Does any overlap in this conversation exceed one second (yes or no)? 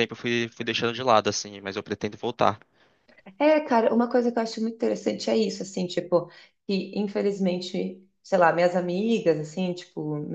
no